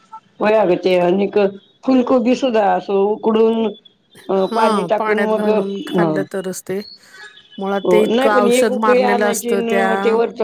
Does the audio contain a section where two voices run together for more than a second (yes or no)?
yes